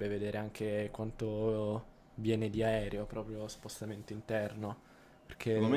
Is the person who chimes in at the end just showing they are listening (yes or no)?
no